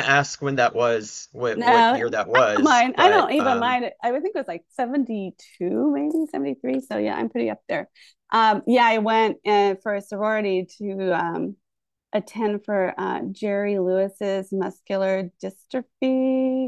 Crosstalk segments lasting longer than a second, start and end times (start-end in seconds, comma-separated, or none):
1.5-3.8